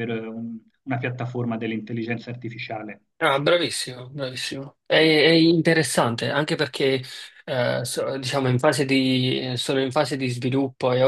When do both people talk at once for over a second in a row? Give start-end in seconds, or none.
none